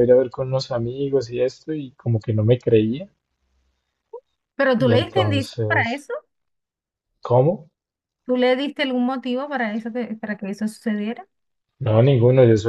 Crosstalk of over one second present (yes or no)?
yes